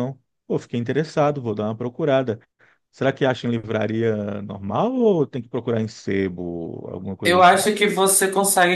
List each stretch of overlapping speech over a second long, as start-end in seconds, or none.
none